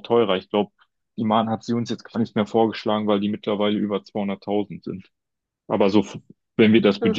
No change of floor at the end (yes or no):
yes